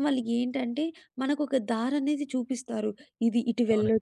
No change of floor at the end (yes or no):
yes